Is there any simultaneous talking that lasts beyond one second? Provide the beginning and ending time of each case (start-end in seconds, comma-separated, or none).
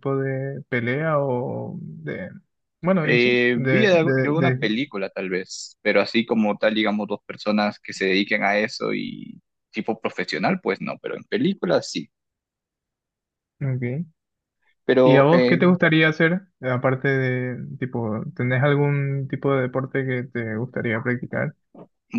3.0-4.7